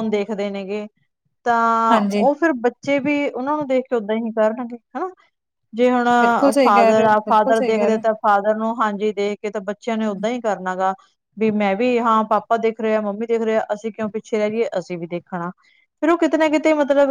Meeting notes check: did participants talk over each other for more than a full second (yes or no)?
yes